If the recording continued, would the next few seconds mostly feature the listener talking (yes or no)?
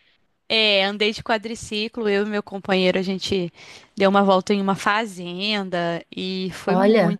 no